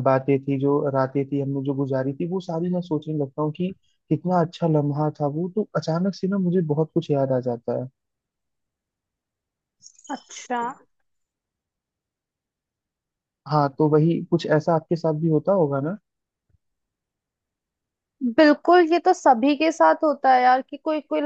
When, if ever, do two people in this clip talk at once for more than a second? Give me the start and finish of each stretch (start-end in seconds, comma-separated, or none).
none